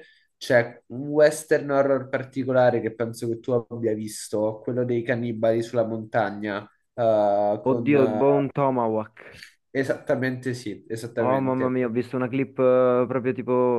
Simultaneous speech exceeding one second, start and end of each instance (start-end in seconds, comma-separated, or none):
none